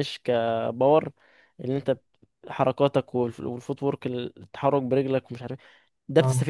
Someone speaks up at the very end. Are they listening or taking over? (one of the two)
listening